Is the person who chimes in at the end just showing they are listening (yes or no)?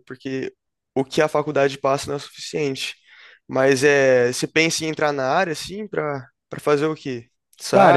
no